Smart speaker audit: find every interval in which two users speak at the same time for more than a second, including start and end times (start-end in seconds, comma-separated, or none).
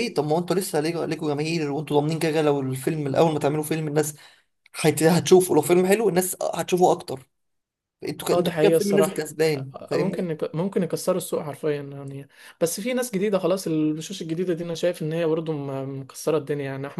8.3-10.3